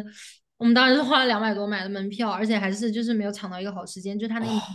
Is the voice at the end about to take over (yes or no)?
no